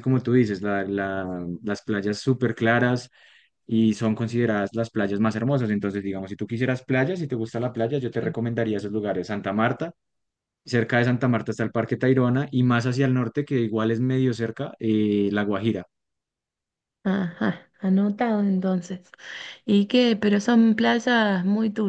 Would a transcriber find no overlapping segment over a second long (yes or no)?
yes